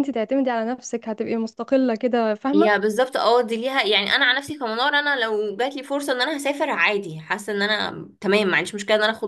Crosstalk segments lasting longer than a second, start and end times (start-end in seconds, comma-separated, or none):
none